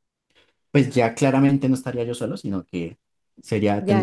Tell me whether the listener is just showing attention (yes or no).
no